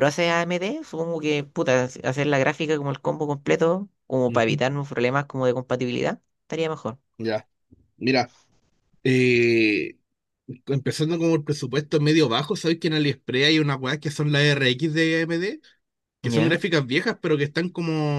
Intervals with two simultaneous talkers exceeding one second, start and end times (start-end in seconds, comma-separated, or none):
none